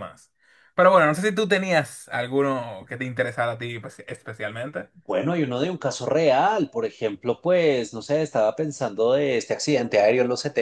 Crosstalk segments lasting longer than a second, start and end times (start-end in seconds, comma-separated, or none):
none